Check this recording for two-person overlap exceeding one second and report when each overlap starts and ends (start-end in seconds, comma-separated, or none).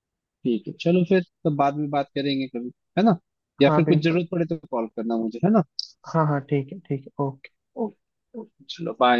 none